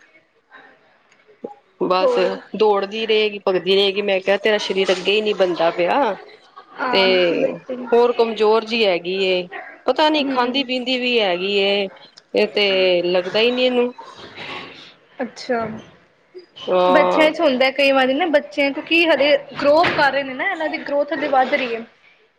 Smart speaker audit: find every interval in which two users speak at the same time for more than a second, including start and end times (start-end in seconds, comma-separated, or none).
none